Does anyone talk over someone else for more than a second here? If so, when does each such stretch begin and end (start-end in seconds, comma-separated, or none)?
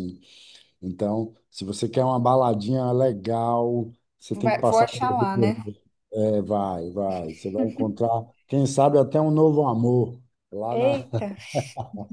4.3-5.6